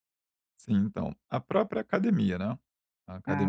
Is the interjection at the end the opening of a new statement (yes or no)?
no